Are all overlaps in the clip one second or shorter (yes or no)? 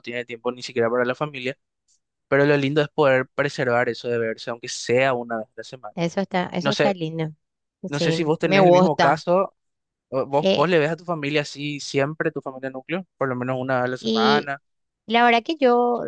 no